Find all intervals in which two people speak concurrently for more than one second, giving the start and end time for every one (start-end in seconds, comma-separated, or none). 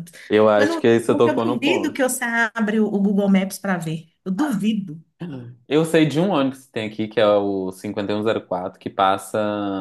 0.6-2.0